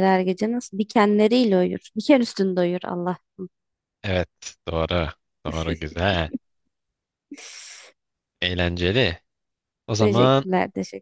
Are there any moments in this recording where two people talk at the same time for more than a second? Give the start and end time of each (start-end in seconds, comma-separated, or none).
none